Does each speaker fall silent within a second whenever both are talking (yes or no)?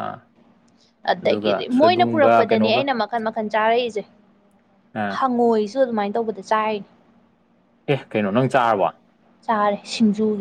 no